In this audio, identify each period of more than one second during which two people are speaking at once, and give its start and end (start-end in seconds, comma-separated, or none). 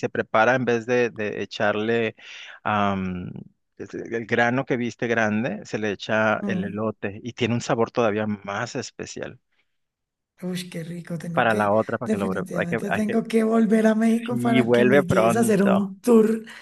11.3-13.2, 14.3-15.9